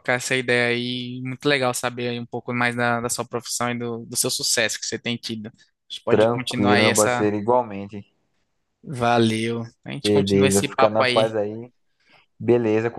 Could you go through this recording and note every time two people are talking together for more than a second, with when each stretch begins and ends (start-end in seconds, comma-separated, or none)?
6.1-7.3, 10.0-11.3